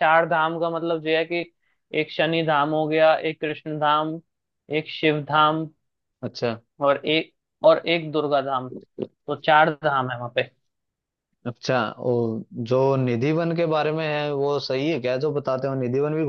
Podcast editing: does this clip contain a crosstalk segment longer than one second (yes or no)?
no